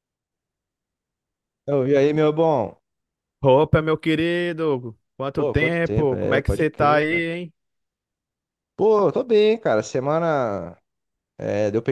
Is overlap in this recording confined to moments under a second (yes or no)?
no